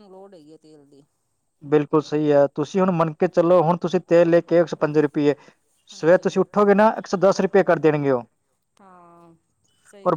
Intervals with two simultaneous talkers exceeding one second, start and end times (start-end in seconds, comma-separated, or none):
none